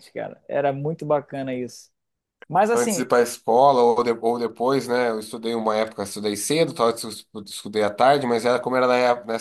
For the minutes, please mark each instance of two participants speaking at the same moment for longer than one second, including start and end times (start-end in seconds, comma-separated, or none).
none